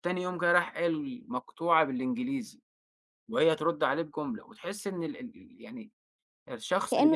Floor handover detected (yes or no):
no